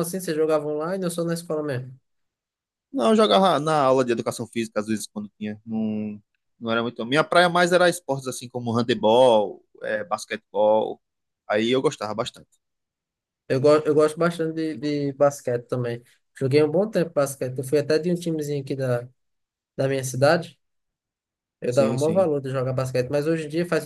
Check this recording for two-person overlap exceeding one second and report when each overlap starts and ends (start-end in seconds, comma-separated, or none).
none